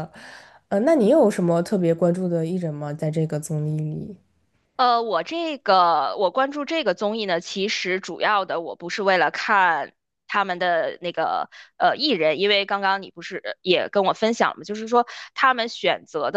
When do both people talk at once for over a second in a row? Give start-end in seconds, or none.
none